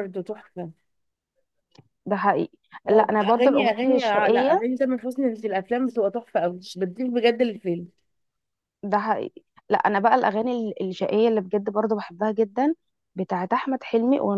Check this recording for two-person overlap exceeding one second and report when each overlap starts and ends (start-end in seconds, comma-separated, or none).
2.9-4.6